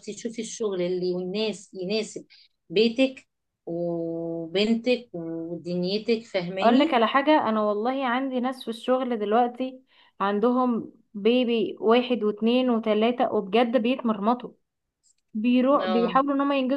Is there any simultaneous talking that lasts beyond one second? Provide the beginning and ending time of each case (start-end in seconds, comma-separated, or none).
none